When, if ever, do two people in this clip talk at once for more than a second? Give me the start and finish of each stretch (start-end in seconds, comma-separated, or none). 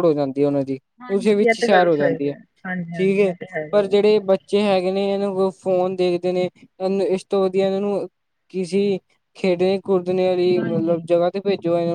1.0-2.3